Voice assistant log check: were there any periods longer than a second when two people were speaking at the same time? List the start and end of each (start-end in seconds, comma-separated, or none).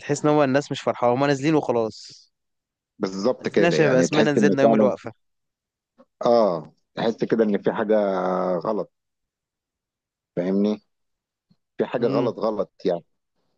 3.4-4.9